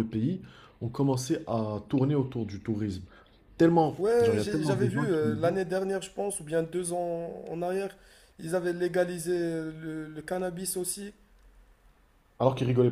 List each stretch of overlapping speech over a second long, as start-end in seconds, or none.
4.0-5.6